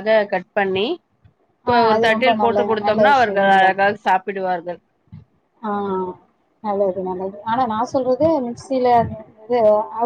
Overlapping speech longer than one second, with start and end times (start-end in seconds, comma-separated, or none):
1.9-3.8